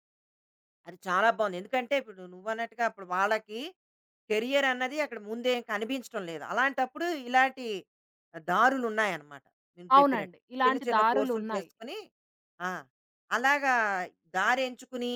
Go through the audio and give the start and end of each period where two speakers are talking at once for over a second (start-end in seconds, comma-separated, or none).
9.9-11.7